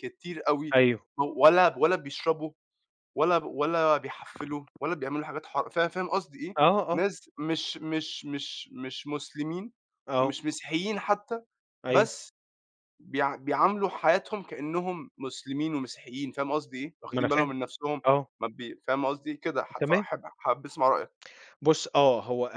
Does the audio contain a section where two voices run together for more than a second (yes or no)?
no